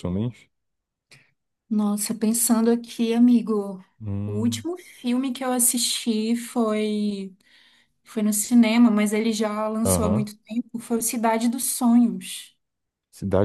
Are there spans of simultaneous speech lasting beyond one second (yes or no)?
no